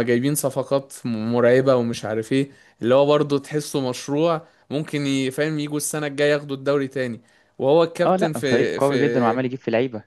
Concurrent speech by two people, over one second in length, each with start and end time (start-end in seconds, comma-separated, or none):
8.1-9.4